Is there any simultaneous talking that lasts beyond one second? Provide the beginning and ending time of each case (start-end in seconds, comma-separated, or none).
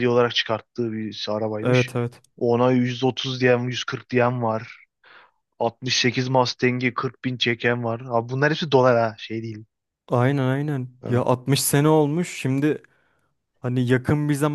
none